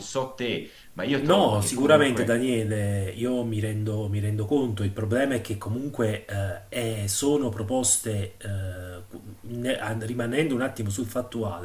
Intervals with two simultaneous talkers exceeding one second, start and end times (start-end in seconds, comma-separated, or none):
1.2-2.4